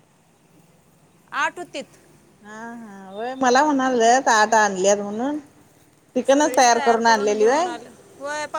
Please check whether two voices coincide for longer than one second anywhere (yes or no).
no